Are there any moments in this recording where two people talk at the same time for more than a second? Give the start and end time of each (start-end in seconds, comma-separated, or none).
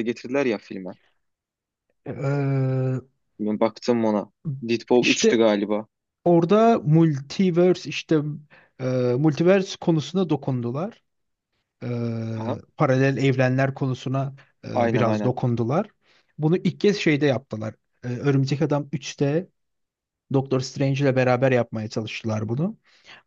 none